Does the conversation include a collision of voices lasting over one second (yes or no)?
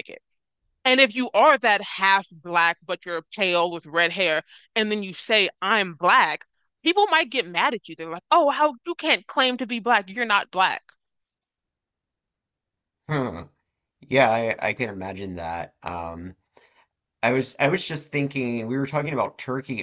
no